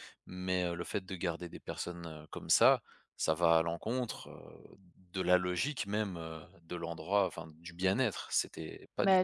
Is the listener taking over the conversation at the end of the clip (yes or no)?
yes